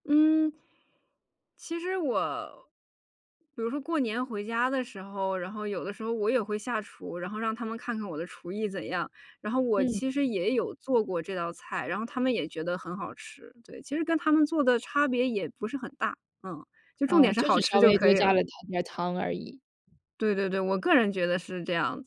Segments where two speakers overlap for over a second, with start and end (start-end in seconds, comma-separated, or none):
17.1-18.4